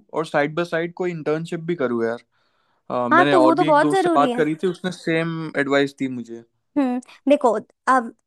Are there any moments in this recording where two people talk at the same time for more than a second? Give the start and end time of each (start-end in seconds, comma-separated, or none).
3.1-4.4